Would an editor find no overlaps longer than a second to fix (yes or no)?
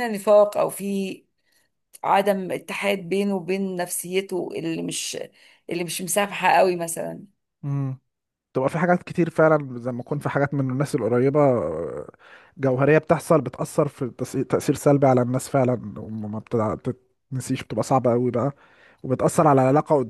yes